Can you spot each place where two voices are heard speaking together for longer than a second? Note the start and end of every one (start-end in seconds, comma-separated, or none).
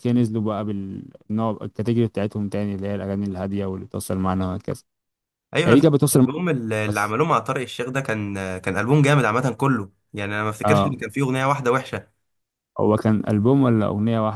none